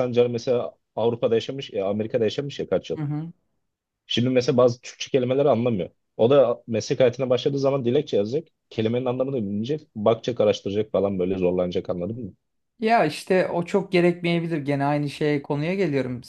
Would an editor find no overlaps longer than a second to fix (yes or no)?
yes